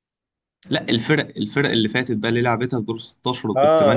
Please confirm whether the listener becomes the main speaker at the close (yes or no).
yes